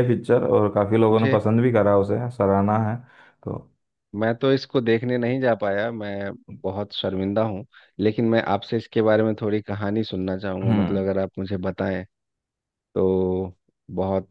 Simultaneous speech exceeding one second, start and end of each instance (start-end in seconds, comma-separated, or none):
none